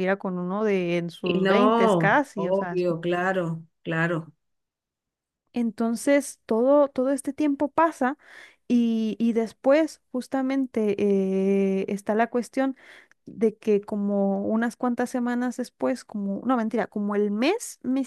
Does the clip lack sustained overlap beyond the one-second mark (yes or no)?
no